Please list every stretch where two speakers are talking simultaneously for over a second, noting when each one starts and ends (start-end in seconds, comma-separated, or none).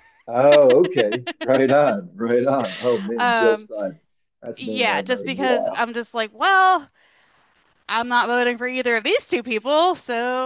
4.6-5.8